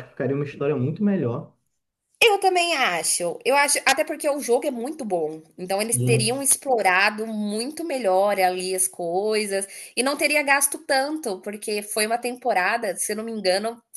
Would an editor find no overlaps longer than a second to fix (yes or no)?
yes